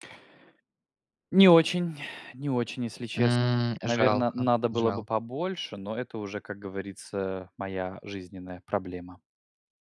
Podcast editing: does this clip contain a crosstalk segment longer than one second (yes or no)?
yes